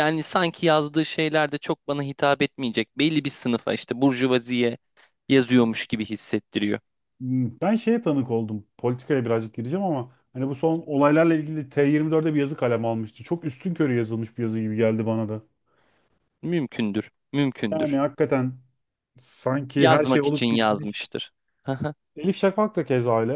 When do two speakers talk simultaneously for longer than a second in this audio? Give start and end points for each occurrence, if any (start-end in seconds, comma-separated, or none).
19.8-21.0